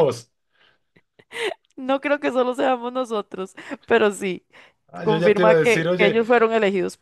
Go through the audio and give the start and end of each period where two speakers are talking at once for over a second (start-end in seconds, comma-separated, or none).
5.0-6.2